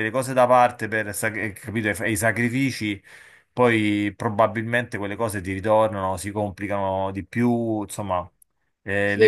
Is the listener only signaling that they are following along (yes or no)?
no